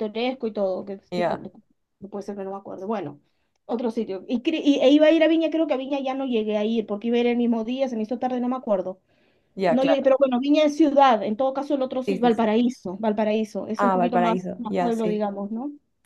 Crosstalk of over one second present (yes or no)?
yes